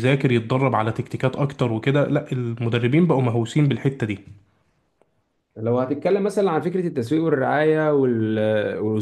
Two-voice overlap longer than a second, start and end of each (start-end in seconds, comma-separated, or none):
none